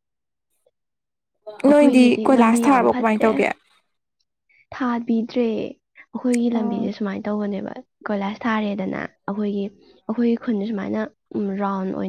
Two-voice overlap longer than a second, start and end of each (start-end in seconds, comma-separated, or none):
1.7-3.3